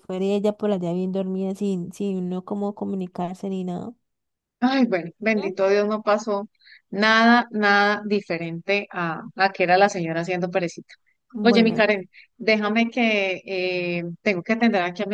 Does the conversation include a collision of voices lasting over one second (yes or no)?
no